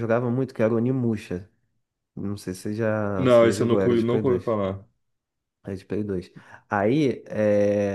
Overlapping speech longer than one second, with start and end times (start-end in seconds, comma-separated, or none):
3.2-4.6